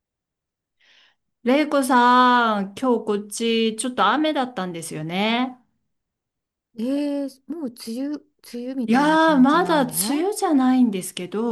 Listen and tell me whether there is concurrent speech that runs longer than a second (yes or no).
yes